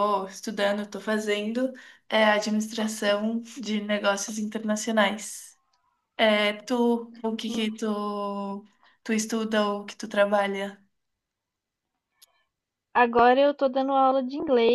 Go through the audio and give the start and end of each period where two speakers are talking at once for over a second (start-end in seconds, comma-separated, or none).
none